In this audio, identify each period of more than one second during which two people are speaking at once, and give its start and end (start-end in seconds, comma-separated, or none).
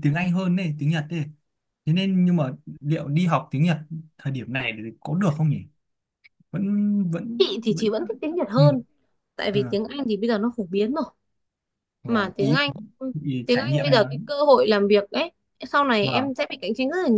none